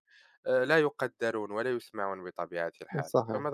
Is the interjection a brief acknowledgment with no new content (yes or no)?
no